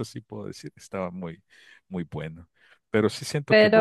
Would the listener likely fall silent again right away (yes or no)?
yes